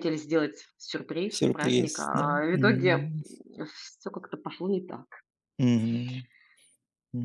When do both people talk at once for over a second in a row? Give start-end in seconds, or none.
1.3-3.1